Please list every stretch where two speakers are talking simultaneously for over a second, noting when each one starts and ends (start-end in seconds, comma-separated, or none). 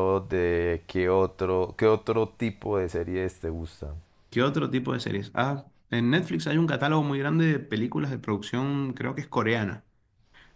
none